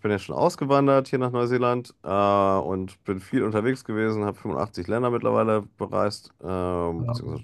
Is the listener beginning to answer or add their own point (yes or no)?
no